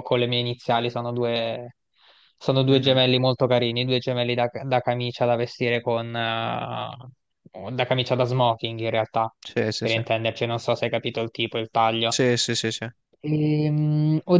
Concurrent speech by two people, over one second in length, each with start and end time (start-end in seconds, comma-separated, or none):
none